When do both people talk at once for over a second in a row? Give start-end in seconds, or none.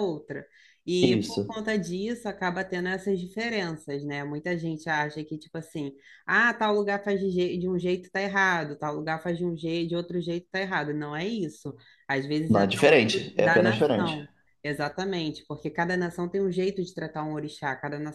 12.5-14.2